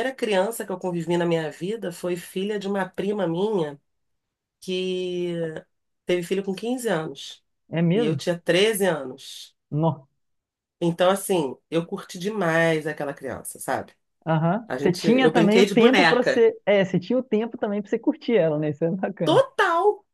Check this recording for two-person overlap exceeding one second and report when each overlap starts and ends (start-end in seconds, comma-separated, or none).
14.7-16.5